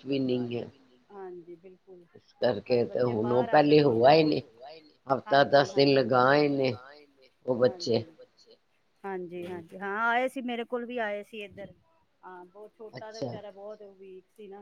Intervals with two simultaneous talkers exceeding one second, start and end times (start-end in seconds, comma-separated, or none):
2.7-4.1